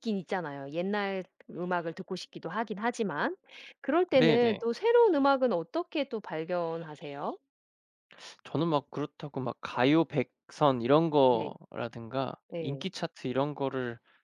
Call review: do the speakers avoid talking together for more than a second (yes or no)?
yes